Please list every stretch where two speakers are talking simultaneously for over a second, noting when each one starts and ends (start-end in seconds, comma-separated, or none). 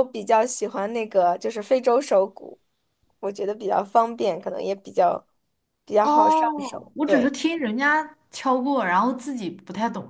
6.0-7.3